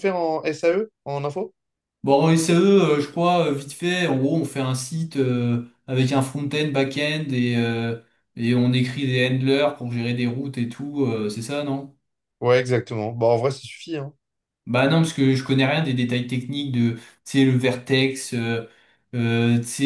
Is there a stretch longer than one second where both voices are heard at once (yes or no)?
no